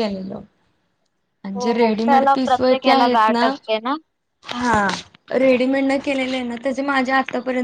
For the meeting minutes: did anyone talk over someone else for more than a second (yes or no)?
yes